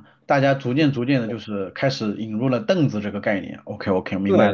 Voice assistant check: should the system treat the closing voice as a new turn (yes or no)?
yes